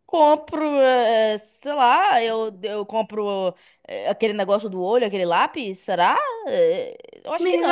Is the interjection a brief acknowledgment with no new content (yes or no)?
no